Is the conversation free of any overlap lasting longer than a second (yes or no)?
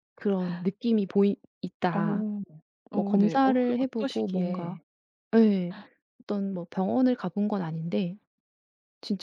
no